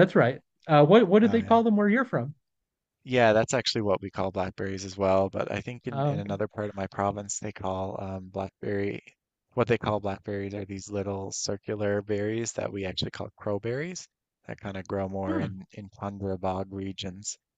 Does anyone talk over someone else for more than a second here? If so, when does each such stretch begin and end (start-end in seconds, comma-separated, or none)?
none